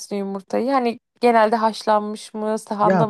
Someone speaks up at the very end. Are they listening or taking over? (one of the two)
taking over